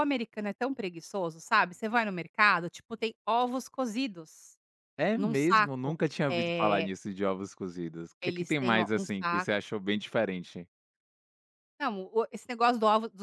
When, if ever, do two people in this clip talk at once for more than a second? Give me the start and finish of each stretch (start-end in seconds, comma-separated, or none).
5.1-6.9, 8.2-9.5